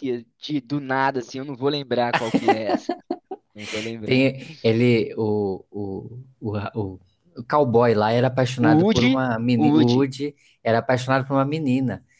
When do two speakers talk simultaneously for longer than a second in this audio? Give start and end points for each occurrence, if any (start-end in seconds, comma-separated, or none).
8.6-10.1